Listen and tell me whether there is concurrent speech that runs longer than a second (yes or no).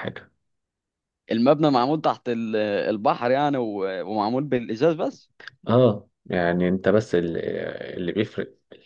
no